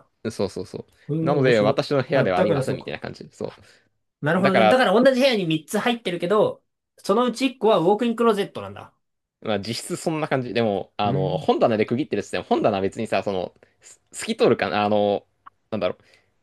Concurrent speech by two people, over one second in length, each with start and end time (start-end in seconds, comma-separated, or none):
1.2-2.9